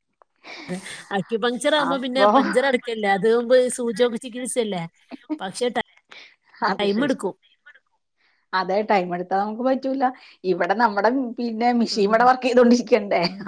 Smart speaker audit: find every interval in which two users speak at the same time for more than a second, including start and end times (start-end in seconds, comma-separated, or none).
none